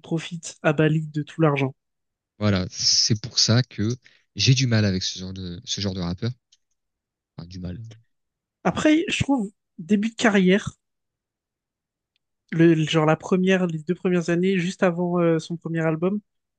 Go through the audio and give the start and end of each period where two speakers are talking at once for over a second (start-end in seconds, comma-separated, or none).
none